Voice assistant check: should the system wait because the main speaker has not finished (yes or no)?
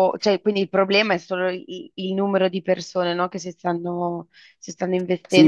no